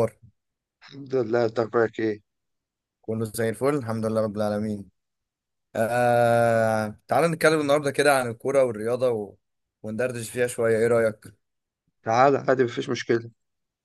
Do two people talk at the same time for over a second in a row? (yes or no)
no